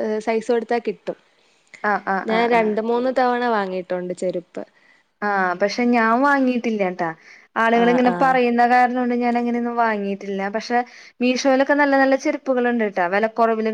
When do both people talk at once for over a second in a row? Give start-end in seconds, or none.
none